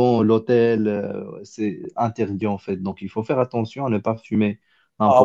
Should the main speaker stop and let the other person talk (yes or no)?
yes